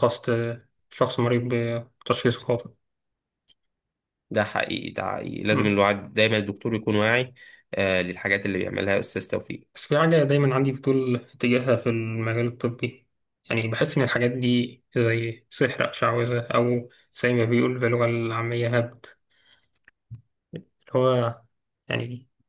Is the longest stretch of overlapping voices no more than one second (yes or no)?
yes